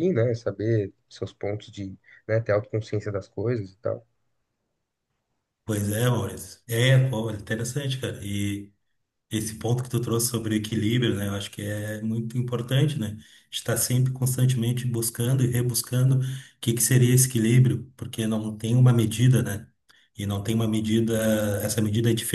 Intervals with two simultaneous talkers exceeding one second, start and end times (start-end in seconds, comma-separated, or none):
none